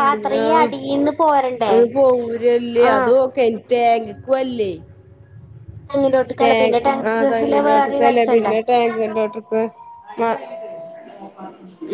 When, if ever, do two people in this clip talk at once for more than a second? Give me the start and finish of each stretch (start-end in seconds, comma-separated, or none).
6.4-8.5